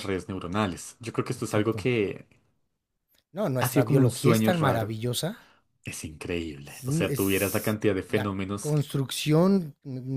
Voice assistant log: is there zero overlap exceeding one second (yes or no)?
no